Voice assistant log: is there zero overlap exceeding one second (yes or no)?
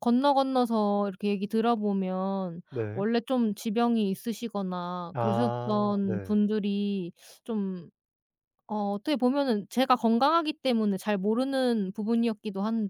no